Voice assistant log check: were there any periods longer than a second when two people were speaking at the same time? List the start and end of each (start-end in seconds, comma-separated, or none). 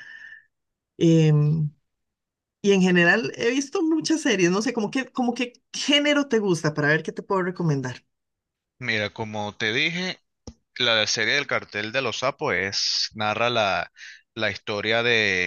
none